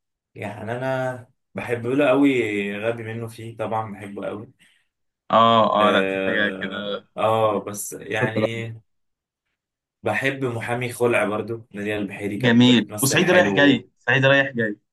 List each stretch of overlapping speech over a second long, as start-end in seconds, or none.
5.7-7.1, 12.4-13.9